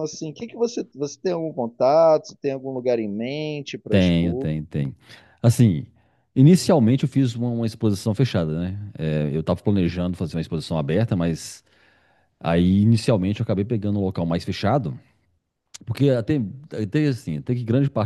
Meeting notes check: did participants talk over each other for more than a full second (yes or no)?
no